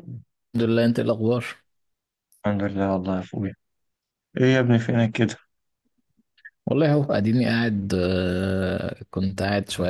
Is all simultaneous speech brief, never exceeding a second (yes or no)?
yes